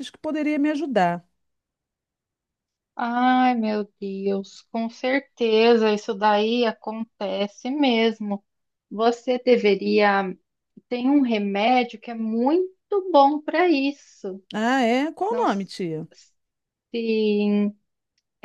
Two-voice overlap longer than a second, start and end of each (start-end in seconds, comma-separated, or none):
none